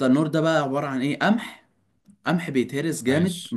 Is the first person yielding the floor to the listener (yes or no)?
no